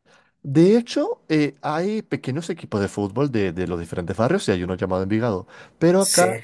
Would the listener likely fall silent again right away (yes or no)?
yes